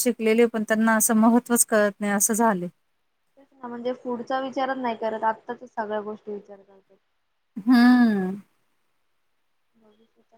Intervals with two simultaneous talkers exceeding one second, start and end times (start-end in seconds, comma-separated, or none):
none